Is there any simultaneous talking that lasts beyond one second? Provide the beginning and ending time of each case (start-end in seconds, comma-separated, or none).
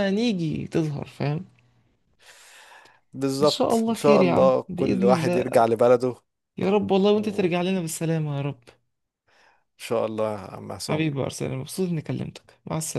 3.4-5.5